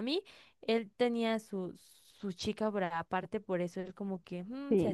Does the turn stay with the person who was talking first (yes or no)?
no